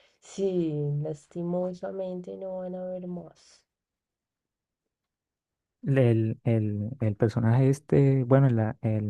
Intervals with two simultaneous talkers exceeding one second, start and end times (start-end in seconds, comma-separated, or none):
none